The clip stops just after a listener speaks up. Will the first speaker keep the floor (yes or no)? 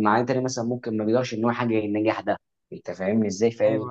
yes